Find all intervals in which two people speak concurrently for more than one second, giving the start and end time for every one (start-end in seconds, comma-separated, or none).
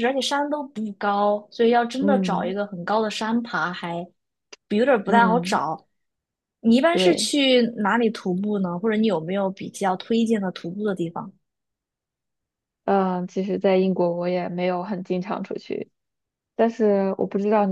none